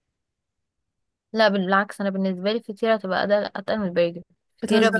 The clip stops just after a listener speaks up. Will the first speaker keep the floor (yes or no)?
yes